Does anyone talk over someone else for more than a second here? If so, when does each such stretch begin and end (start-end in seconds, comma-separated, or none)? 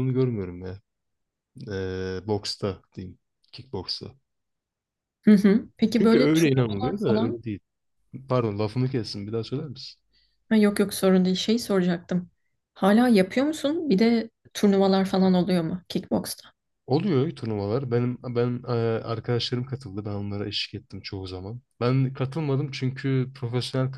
5.9-7.4